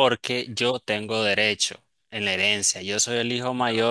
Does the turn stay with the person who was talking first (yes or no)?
yes